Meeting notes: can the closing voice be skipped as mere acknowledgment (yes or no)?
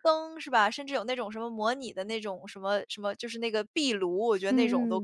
no